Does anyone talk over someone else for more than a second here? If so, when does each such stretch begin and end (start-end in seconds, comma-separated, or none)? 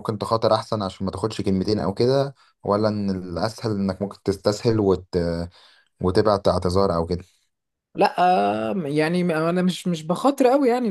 none